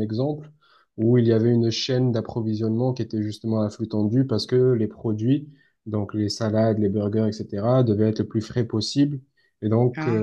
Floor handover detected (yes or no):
no